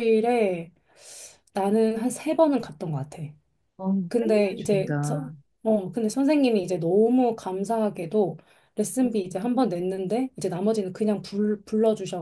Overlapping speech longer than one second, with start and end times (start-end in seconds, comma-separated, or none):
4.1-5.3